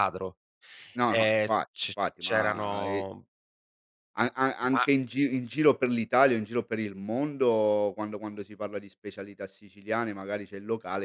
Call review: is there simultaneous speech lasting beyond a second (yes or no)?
yes